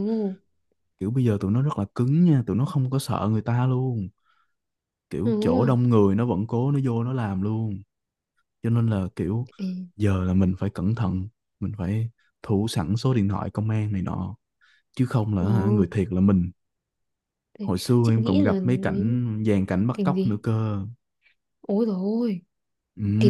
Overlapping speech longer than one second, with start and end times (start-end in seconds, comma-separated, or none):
17.6-19.3